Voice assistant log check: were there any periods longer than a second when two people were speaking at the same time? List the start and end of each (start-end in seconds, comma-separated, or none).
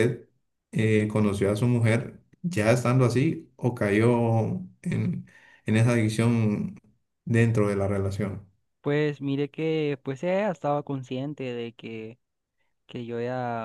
none